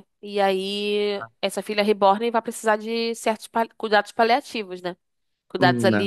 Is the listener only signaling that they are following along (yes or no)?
yes